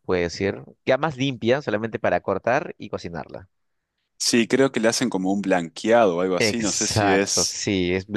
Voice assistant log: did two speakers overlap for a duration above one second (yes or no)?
yes